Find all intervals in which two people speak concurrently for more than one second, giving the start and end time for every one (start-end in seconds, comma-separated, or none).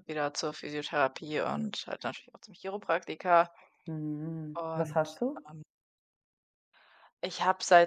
none